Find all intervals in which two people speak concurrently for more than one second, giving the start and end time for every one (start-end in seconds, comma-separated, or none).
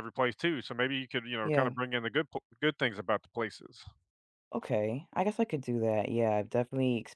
none